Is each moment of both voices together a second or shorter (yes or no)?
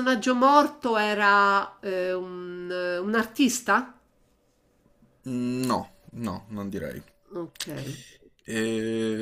yes